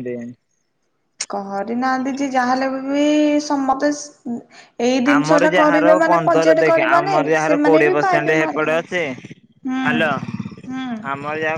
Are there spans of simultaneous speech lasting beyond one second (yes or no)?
yes